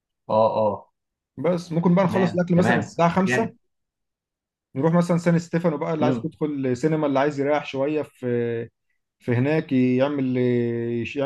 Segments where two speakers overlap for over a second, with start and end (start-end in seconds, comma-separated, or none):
2.0-3.5